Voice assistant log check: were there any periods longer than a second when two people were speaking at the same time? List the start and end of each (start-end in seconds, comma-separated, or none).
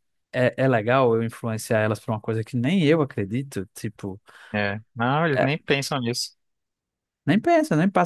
none